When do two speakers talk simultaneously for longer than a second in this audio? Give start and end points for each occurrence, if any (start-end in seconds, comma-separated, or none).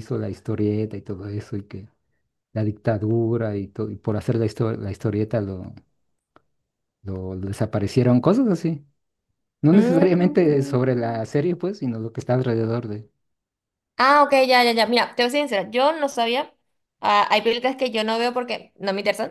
9.7-11.2